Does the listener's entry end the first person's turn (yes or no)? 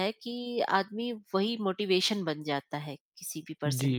yes